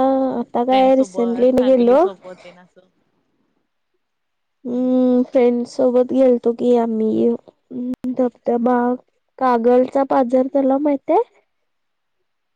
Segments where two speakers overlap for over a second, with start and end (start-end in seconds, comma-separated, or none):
0.7-2.0